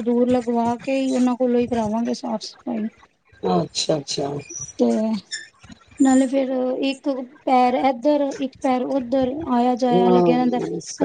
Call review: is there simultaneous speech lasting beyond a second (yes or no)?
no